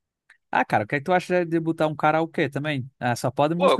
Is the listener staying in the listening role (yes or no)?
no